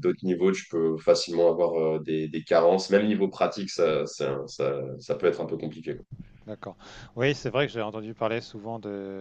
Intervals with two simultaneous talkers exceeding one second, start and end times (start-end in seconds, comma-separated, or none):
none